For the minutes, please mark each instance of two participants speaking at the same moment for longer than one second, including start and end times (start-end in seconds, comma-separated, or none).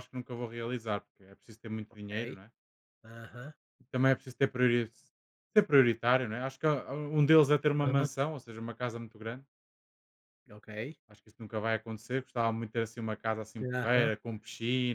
none